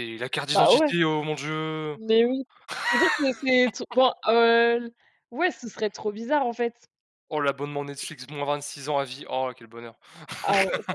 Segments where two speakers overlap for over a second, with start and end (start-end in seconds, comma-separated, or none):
none